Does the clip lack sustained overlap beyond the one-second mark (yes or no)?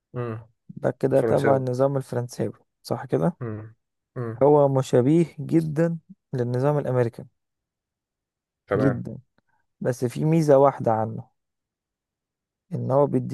yes